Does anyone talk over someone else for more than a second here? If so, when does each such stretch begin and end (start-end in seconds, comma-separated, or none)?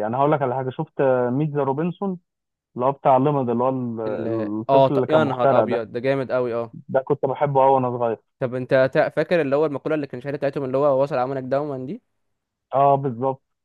4.1-5.8